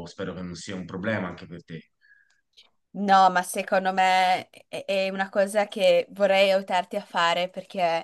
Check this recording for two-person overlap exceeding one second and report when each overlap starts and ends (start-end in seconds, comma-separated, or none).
none